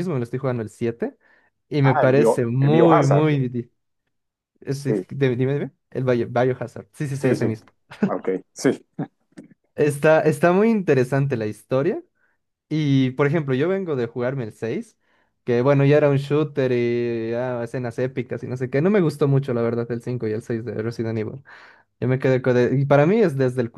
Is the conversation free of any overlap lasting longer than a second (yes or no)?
no